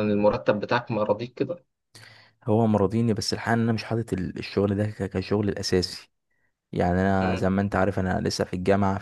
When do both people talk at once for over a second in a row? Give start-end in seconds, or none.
none